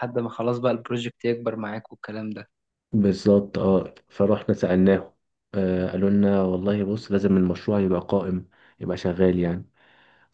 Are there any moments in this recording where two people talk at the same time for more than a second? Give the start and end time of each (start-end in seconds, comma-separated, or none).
none